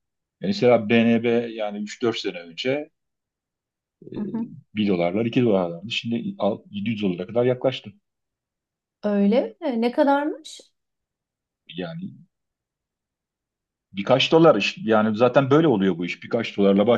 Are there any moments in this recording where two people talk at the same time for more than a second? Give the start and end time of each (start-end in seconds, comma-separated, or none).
none